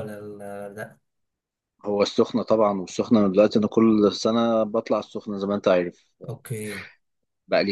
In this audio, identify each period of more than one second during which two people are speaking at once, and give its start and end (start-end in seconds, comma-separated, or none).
none